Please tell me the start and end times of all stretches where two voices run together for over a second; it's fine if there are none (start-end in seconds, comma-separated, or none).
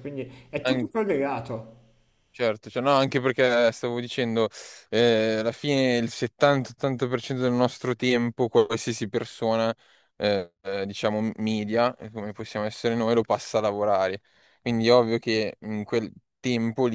none